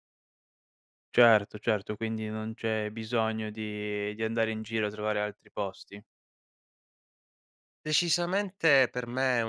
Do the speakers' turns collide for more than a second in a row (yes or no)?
no